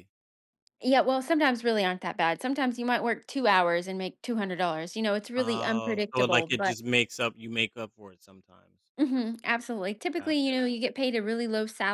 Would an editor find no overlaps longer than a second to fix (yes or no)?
no